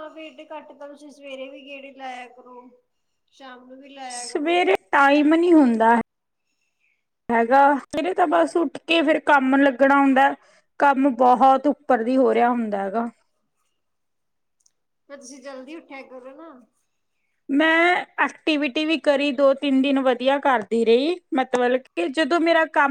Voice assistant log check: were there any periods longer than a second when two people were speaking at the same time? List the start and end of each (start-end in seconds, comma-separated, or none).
none